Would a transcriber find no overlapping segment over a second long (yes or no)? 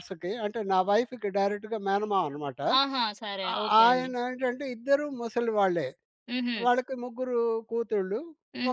yes